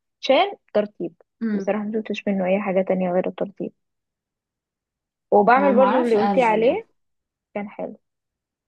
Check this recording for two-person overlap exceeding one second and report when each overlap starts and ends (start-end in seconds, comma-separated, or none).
5.6-6.8